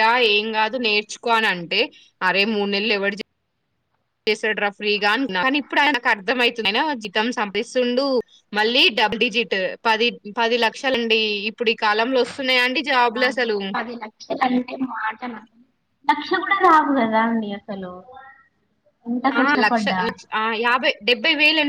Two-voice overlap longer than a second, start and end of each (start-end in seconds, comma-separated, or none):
none